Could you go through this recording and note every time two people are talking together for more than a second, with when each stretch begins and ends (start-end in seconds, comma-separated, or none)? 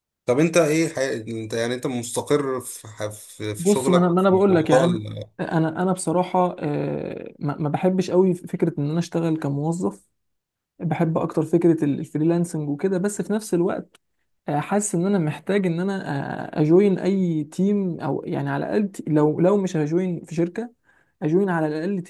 3.6-5.0